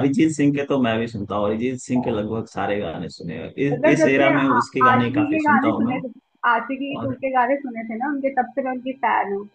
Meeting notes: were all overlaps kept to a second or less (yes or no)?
no